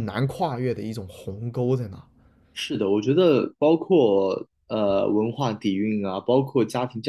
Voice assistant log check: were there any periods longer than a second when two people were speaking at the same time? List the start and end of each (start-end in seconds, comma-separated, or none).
none